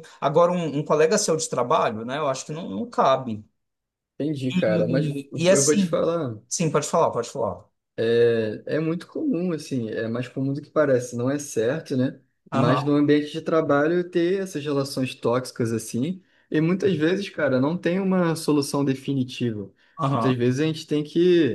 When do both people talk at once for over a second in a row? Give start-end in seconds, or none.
4.5-6.0